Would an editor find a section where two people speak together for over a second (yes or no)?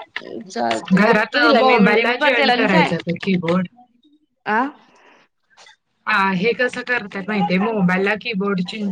yes